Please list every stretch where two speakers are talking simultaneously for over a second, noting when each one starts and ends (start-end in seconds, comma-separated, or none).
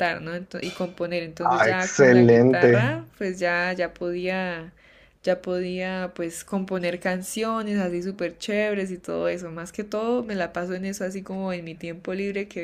1.4-3.0